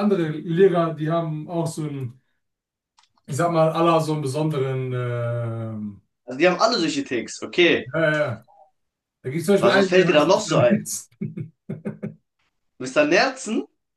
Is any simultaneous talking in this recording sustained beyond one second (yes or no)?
yes